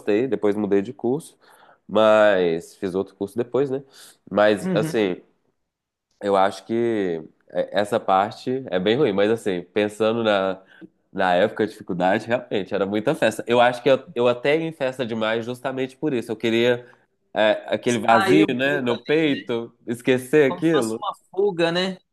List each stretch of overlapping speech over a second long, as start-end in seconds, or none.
17.9-19.4